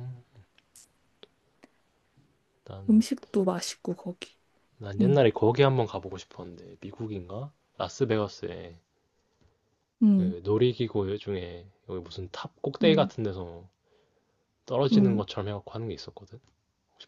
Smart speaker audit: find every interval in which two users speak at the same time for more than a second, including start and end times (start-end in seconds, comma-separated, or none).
none